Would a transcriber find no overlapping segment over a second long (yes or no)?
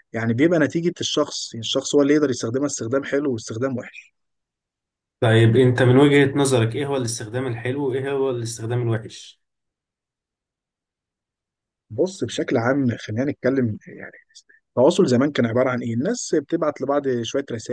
yes